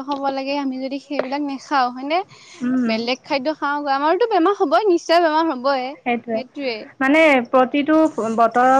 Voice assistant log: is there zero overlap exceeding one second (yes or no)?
yes